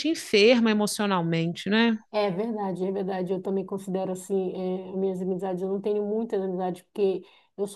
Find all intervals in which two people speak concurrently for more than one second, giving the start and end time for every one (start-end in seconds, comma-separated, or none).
none